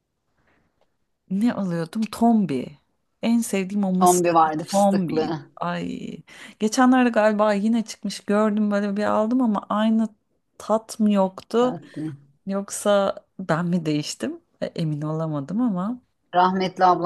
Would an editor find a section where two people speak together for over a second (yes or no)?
yes